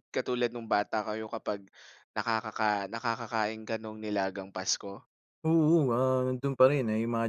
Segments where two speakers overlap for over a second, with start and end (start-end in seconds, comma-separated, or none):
none